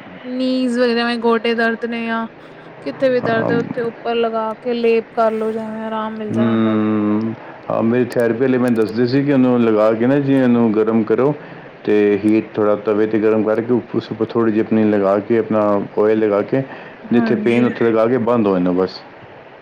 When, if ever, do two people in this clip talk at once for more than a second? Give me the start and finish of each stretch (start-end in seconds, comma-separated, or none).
none